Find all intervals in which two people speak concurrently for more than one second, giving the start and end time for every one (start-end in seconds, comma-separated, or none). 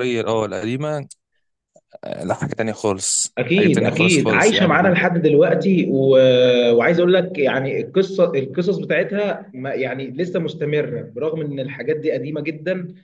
3.4-4.7